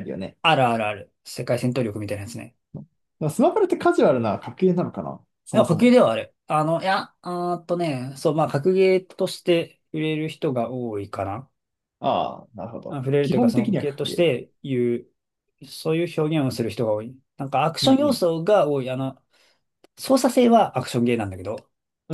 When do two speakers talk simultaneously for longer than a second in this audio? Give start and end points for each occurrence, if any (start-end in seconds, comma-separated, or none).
12.9-14.3